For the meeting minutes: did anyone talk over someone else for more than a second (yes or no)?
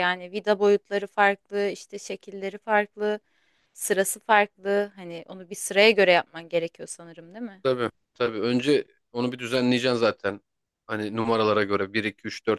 no